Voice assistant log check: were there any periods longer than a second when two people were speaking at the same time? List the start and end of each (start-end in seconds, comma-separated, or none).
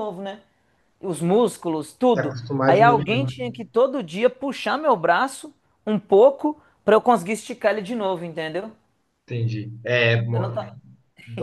2.1-3.5